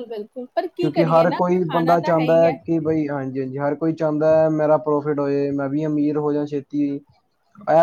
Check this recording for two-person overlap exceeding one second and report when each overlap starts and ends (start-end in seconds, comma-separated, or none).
0.8-2.6